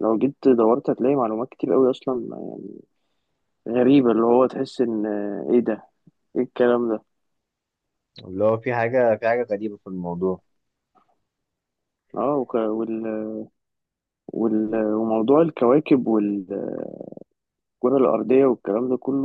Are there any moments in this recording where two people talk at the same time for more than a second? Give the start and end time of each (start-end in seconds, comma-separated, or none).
none